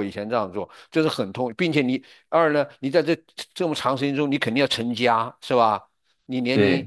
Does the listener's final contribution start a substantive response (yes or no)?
no